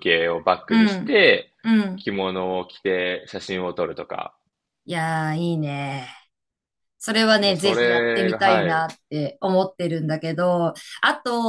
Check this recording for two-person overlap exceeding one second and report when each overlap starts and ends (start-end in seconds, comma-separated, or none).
7.4-8.9